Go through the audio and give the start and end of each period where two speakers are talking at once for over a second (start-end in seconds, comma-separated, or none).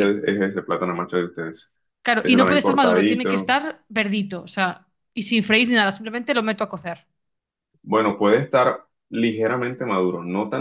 2.2-3.6